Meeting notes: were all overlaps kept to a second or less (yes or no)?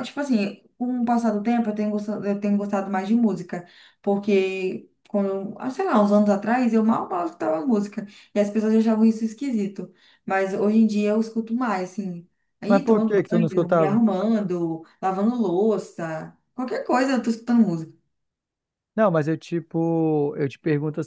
no